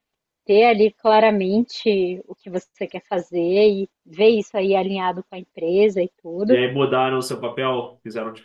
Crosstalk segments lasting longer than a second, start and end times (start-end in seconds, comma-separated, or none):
none